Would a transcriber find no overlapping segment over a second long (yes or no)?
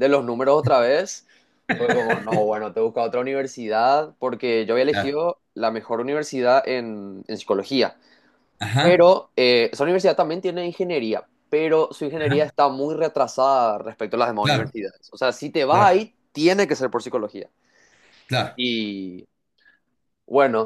yes